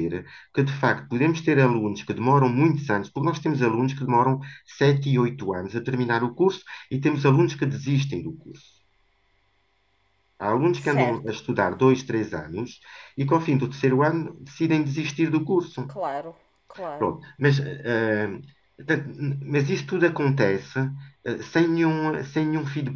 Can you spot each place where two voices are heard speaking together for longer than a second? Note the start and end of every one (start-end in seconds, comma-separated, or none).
none